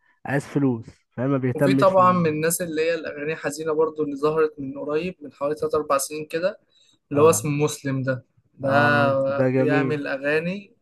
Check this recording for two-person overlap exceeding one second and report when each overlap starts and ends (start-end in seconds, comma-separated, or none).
8.6-9.9